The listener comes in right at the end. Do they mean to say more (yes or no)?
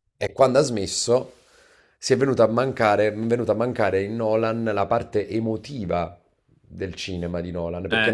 yes